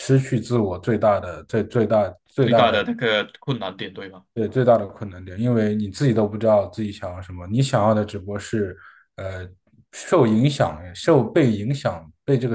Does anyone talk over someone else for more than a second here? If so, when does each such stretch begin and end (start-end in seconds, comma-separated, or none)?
none